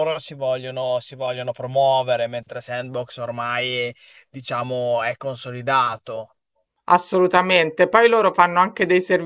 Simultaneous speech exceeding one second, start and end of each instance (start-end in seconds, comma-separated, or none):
none